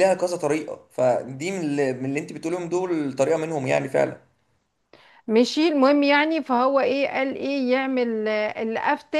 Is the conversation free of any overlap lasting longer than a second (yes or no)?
yes